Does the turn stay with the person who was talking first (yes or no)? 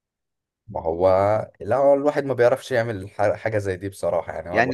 no